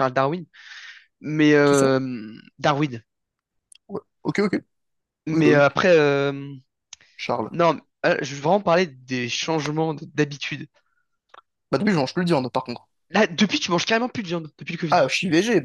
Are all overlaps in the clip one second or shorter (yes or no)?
yes